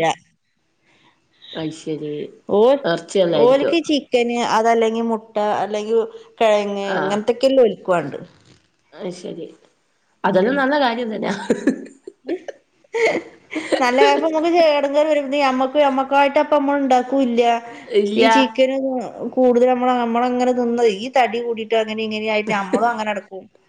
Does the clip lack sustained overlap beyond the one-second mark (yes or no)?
yes